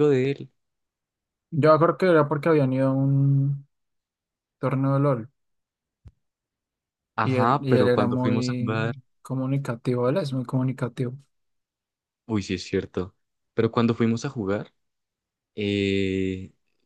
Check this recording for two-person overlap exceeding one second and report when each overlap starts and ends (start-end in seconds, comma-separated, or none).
7.2-8.8